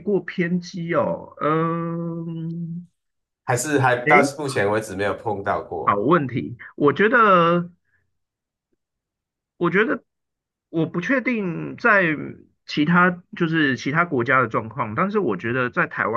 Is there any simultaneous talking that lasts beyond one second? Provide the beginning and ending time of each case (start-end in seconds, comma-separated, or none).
none